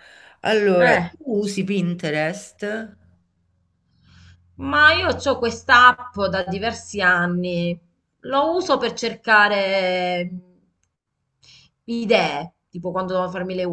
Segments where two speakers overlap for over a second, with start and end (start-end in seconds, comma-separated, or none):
none